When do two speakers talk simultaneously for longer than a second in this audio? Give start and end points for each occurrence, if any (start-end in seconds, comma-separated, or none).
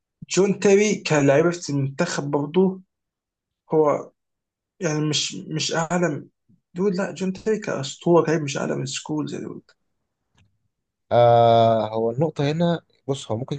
none